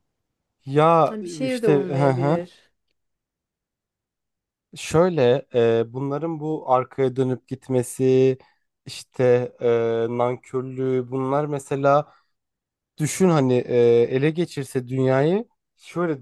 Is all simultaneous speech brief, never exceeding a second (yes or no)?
no